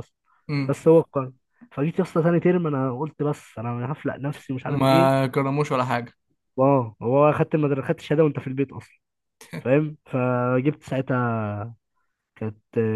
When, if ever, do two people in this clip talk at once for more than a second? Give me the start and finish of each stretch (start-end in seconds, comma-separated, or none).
none